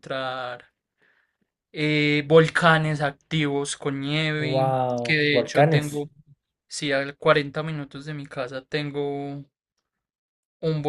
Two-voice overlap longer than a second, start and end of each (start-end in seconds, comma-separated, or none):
4.3-6.0